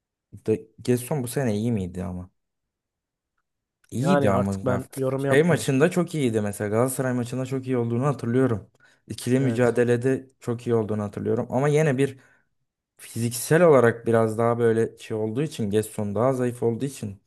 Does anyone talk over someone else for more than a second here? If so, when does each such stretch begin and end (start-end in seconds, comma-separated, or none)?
4.0-5.7